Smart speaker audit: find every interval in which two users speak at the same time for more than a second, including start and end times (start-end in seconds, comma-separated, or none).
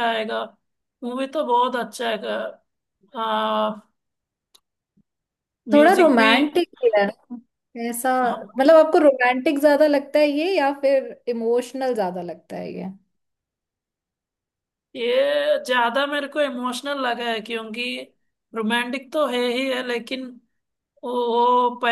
none